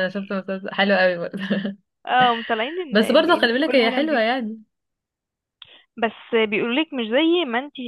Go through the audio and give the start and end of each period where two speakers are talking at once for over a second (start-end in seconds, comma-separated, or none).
2.9-4.3